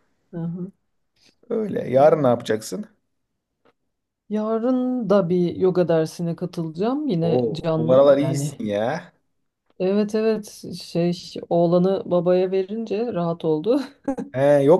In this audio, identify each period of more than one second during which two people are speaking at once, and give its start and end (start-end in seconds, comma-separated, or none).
7.2-8.6